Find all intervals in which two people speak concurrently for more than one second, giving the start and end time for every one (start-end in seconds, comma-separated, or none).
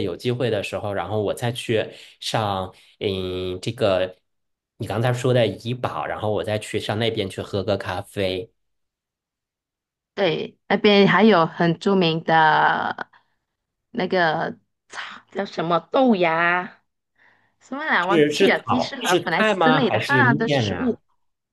18.0-21.0